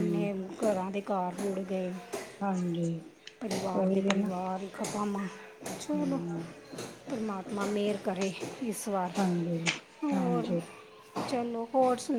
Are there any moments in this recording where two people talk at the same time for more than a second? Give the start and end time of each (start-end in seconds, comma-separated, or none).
none